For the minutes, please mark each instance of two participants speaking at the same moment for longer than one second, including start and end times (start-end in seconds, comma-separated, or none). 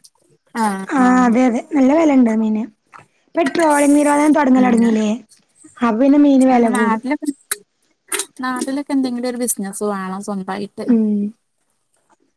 none